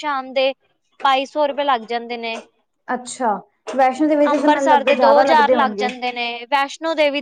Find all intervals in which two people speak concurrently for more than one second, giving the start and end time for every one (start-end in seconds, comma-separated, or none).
4.3-5.9